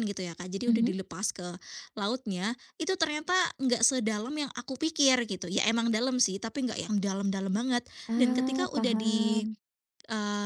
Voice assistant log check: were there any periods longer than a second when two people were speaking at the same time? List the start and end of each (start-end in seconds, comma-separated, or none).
8.1-9.5